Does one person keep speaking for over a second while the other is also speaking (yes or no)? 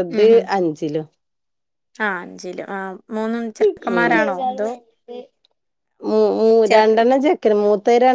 no